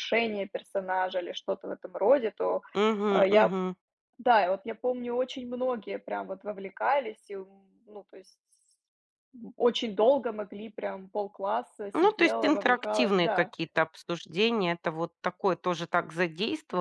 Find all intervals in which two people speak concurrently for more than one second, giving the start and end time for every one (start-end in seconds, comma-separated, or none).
11.9-13.5